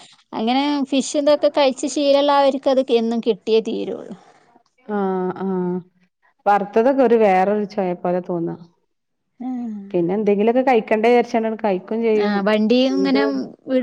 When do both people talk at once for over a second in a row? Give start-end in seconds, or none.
none